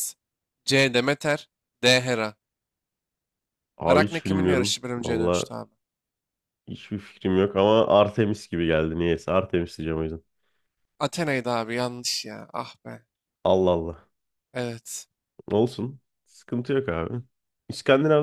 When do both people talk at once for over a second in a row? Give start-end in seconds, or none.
3.9-5.5